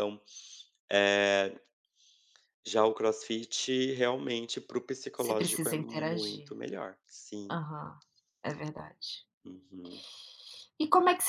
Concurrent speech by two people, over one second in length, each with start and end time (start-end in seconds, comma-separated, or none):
5.1-6.5